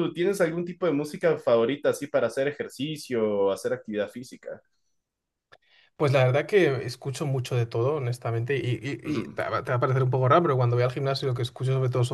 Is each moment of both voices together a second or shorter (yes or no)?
yes